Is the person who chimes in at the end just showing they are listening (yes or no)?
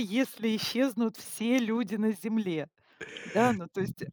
yes